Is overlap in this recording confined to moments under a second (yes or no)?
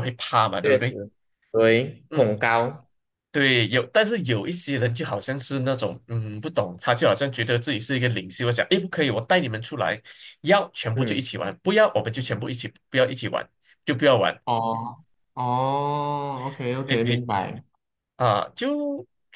yes